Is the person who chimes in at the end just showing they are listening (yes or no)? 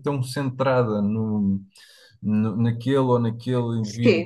yes